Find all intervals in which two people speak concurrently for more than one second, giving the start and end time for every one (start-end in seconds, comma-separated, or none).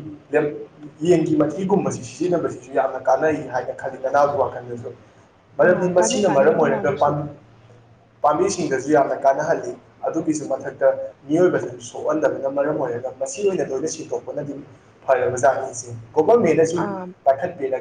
5.7-7.1